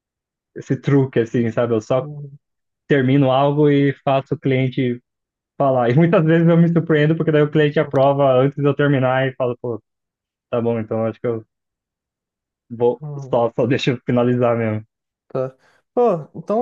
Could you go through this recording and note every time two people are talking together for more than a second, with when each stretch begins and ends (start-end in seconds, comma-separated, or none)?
none